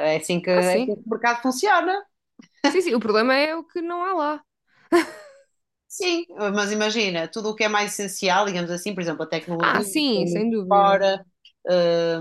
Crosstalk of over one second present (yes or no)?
yes